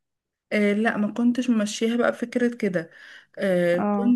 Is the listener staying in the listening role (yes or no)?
yes